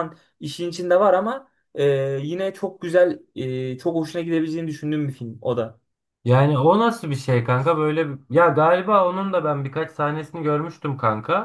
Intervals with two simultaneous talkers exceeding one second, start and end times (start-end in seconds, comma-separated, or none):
none